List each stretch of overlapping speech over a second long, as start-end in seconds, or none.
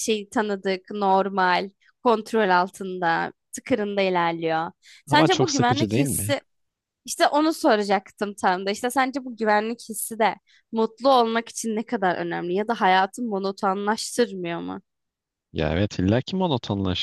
5.1-6.3